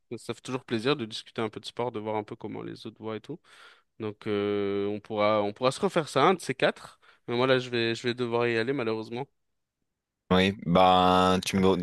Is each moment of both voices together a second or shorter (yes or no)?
yes